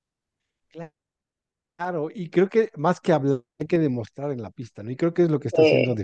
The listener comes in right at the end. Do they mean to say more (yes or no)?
no